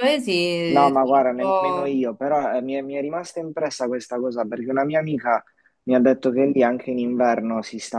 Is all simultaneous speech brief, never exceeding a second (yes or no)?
no